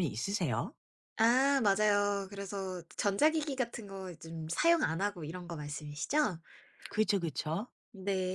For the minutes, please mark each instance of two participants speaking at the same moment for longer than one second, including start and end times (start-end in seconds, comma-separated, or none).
none